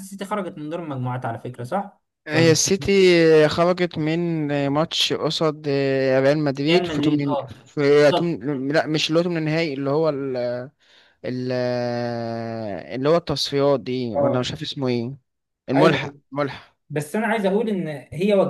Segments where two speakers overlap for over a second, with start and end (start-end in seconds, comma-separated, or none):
6.7-8.4